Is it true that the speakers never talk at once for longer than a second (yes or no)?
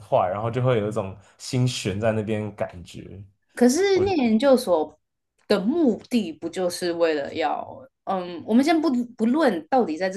yes